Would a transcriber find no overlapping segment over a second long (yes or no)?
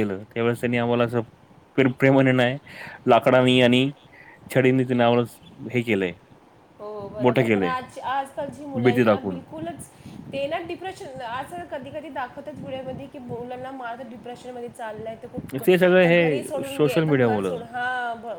no